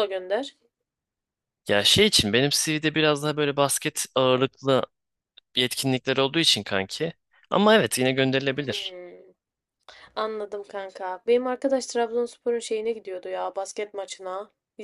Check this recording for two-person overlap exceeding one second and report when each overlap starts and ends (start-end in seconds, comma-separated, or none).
none